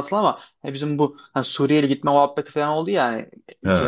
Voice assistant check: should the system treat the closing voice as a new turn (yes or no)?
no